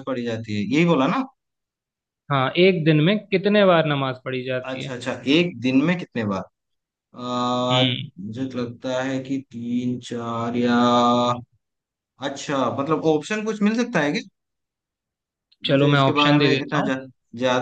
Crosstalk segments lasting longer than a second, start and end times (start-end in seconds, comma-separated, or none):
15.7-16.9